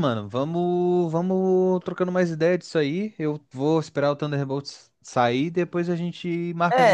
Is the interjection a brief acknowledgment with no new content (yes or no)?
no